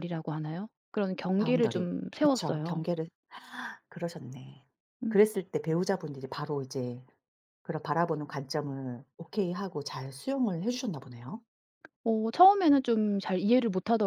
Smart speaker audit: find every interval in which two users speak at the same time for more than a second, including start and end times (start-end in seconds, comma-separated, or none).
1.4-2.8